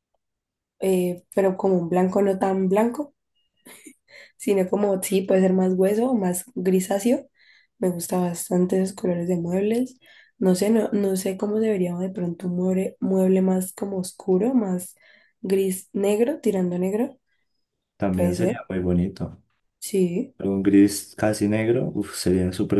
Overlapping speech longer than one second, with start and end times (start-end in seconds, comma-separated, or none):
none